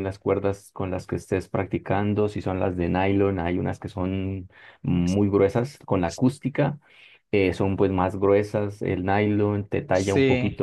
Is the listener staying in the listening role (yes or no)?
yes